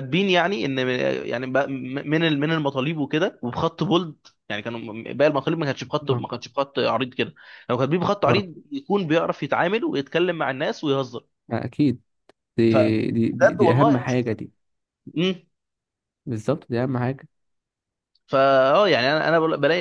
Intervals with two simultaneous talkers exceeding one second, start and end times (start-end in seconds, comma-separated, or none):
12.7-14.4